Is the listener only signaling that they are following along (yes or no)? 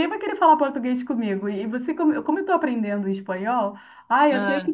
yes